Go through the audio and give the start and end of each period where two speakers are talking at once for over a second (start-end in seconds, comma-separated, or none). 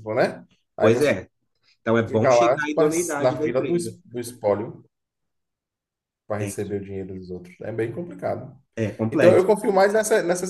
2.1-4.0